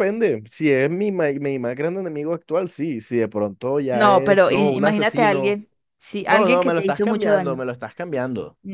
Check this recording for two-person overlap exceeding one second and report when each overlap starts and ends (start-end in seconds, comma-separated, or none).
3.9-5.6, 6.2-7.6